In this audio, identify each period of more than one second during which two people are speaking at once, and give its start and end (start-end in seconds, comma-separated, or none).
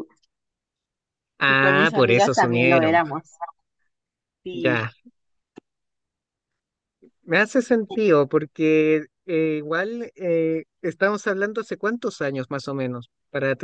1.5-3.0